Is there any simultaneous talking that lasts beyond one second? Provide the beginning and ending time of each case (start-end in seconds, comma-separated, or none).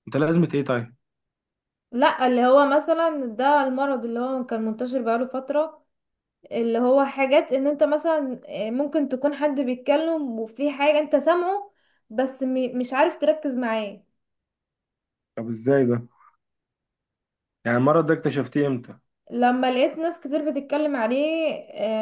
none